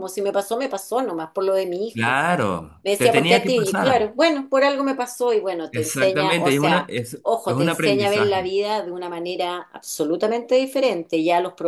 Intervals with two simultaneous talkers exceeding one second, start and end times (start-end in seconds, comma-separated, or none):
2.8-4.1, 5.7-8.5